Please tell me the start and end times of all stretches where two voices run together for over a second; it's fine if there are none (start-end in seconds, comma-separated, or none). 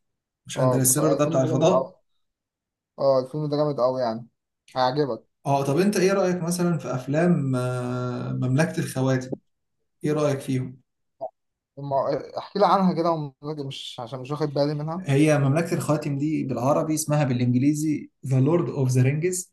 0.6-1.9